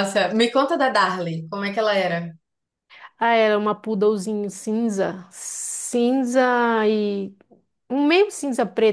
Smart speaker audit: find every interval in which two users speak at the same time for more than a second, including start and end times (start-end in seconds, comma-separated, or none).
none